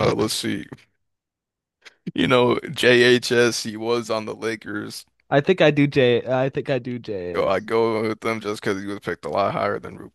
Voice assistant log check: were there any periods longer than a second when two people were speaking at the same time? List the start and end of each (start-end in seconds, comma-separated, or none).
none